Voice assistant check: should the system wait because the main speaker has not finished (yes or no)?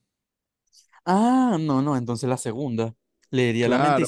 no